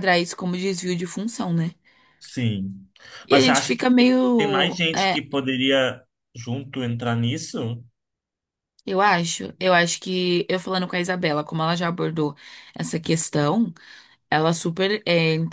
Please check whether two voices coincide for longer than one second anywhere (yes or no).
yes